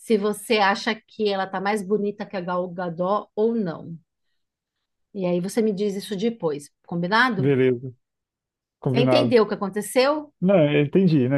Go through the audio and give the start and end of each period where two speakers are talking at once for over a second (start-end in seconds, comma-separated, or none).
none